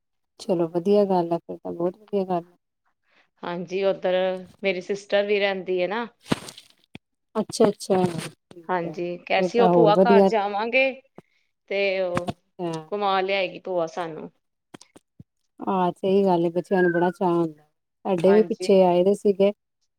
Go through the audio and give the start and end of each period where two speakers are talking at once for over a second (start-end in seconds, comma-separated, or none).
8.7-10.2